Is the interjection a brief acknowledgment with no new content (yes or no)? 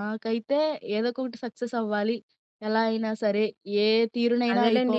no